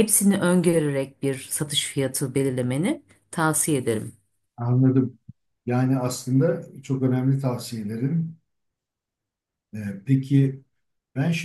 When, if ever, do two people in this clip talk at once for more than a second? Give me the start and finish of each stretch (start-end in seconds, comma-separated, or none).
none